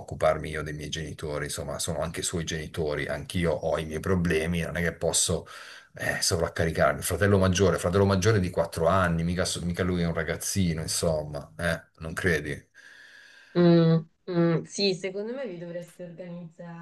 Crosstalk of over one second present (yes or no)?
no